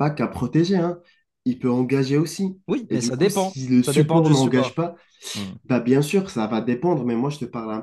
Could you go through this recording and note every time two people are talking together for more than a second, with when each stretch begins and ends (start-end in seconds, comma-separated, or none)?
2.7-4.8